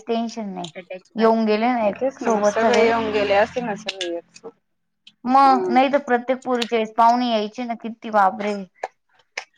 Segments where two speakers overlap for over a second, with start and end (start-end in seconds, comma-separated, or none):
none